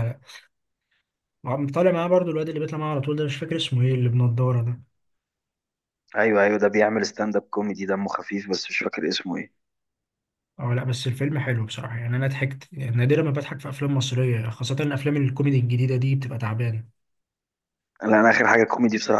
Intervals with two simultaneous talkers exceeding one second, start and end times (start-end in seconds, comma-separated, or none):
none